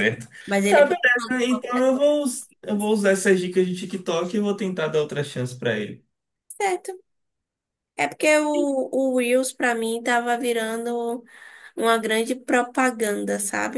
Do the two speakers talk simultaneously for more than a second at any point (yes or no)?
yes